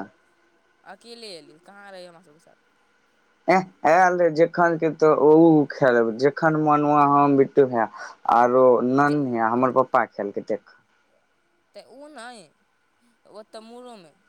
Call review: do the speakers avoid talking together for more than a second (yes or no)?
yes